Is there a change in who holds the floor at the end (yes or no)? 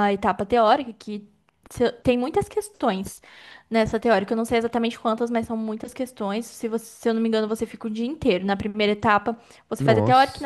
no